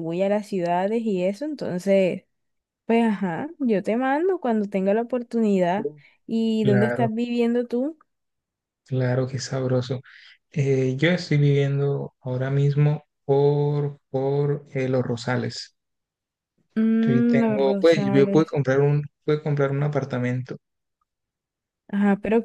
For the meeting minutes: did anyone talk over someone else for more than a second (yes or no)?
yes